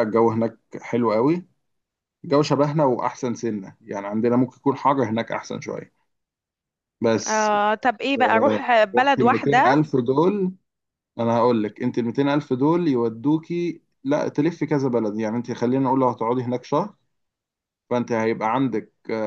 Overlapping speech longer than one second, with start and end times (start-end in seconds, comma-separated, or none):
8.2-9.8